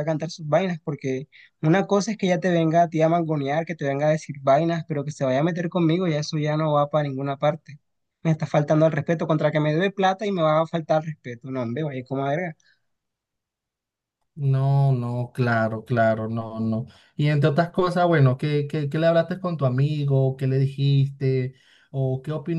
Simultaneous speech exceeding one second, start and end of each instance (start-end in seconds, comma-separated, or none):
none